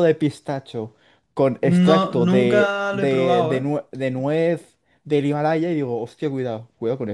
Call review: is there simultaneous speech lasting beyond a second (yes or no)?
yes